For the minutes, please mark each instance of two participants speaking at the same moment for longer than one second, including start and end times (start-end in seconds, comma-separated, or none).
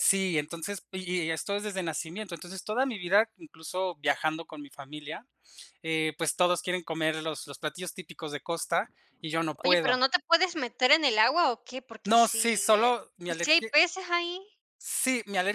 12.0-13.7